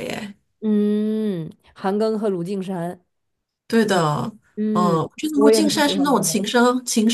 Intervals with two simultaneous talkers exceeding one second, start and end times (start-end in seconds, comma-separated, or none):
4.7-6.4